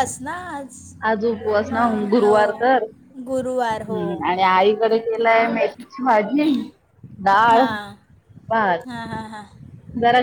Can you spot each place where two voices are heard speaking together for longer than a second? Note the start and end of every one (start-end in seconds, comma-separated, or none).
none